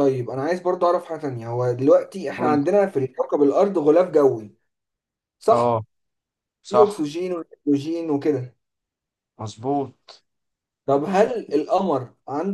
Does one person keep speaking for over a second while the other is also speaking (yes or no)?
no